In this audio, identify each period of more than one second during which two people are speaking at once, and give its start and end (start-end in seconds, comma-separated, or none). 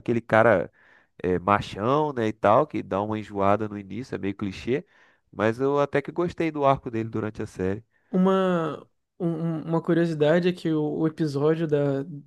none